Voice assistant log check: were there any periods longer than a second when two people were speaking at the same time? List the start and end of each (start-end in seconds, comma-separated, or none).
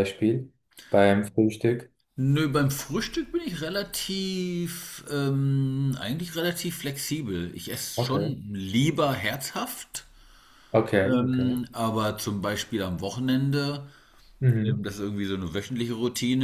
none